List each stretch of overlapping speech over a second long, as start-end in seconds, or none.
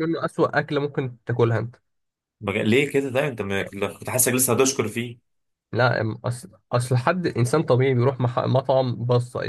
none